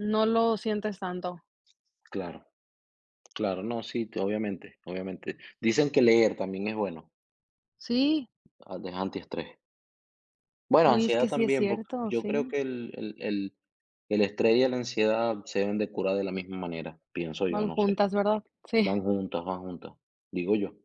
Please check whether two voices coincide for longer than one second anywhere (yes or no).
yes